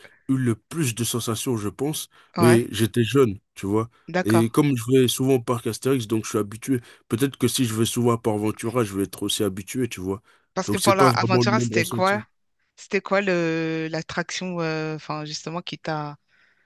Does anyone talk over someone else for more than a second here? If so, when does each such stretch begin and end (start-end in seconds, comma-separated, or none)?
10.7-12.2